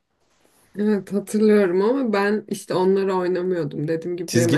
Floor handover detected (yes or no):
yes